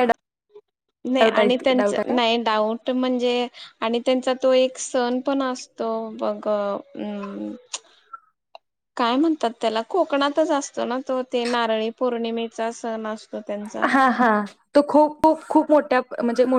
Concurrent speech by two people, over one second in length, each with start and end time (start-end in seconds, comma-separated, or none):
none